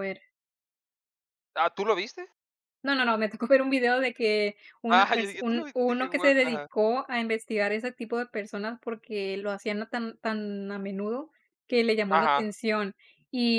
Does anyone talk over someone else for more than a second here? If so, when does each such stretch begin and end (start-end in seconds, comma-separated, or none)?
4.9-6.7